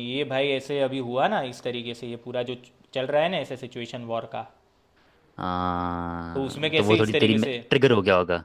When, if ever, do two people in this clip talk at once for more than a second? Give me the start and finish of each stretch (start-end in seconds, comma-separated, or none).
6.3-7.5